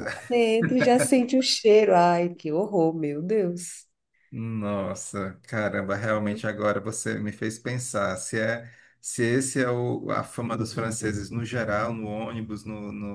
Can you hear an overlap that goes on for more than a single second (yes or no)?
no